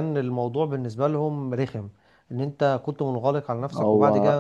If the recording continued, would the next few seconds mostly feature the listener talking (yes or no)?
no